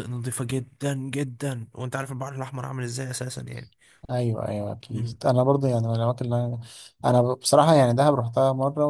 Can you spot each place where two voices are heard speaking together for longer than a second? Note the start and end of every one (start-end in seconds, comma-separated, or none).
none